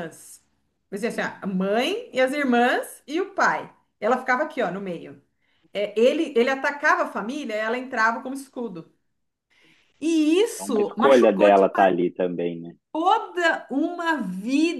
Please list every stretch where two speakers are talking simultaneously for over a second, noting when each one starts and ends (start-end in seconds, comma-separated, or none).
10.6-11.9